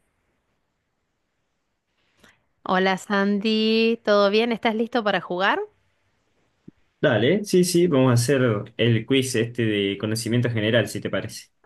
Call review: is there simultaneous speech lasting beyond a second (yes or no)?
no